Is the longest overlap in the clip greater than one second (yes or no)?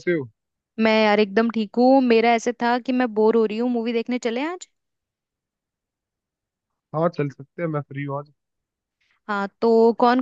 no